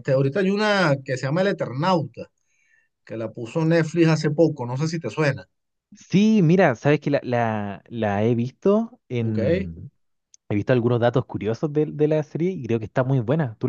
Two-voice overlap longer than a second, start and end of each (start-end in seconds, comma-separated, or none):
none